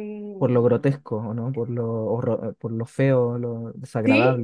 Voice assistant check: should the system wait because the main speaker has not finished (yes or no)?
no